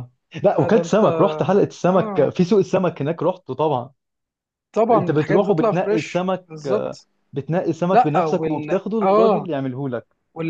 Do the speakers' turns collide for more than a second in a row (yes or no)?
yes